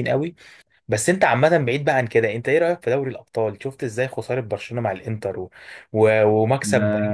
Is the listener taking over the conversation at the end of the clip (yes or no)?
yes